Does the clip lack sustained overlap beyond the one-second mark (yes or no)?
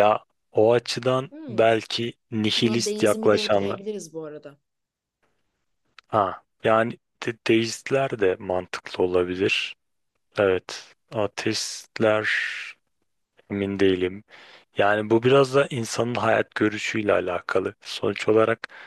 no